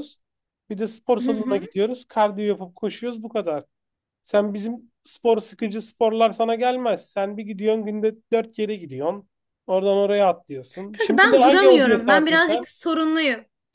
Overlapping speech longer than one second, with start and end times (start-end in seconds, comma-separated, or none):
10.9-12.7